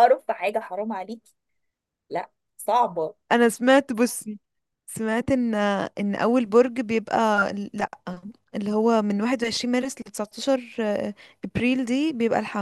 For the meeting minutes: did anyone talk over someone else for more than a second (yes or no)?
no